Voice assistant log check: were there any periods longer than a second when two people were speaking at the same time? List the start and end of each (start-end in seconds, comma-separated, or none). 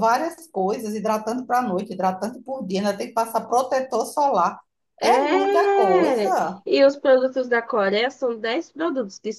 5.0-6.6